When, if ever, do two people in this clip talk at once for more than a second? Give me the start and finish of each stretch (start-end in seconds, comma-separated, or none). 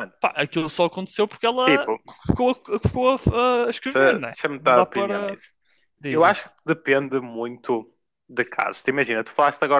3.8-5.4